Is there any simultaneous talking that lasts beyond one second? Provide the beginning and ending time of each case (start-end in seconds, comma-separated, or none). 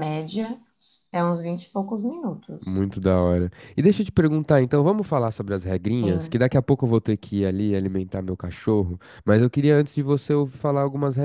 none